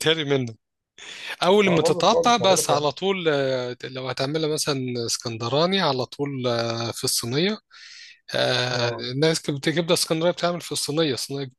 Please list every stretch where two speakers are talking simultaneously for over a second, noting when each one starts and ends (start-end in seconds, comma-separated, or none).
1.6-2.9